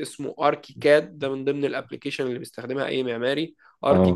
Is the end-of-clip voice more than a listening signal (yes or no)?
no